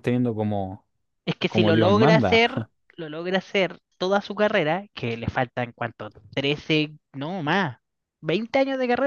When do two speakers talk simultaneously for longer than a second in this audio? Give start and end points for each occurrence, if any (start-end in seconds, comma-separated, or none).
1.5-2.7